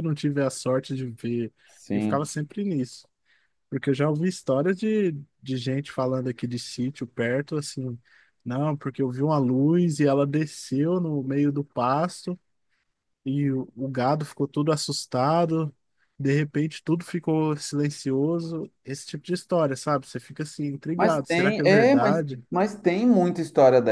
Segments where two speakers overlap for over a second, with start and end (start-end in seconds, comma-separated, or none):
21.0-22.4